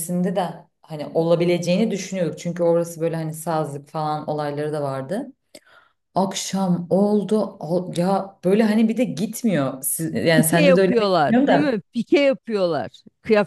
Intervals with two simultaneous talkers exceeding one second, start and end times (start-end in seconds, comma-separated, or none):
10.3-11.7